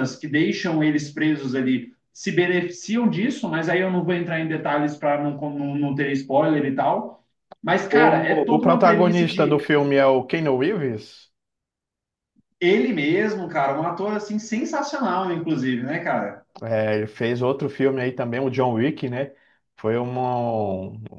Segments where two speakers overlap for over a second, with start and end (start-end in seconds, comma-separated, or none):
8.0-9.7